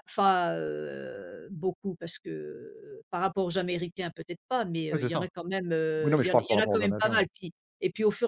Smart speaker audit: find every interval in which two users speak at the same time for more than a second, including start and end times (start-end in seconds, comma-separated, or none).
6.0-7.2